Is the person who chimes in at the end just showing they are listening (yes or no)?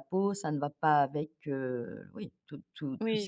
no